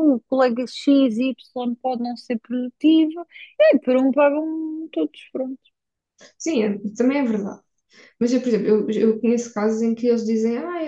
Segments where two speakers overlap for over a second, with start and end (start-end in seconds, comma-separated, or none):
none